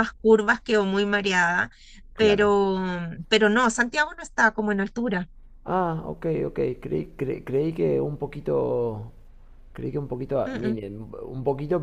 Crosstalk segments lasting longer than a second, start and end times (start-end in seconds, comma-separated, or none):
none